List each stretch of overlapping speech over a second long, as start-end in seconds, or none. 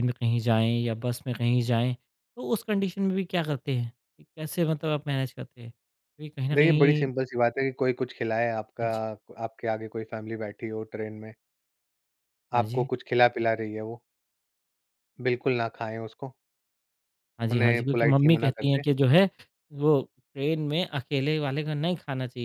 17.5-18.8